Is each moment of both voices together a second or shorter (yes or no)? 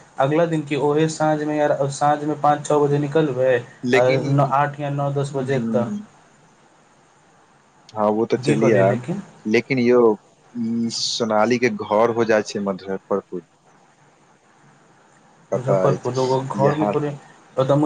no